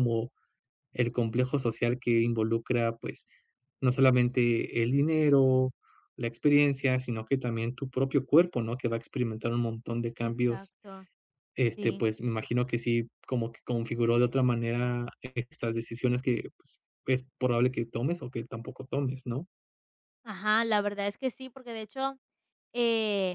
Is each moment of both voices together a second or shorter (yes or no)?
yes